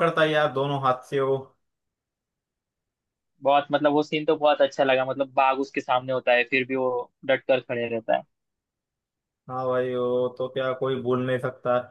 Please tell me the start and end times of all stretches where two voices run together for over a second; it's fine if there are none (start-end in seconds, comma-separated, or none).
none